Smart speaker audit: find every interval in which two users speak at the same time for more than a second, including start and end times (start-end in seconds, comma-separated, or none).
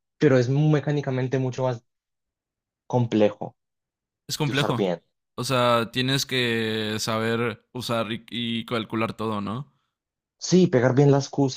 none